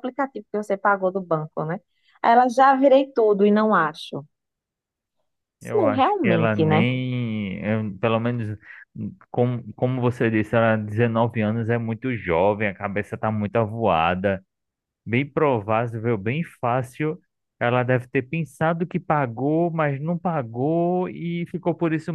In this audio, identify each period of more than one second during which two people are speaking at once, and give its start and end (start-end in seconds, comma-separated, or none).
5.6-6.8